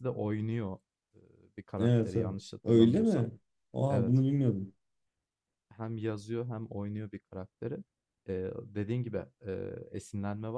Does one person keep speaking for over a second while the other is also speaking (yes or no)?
yes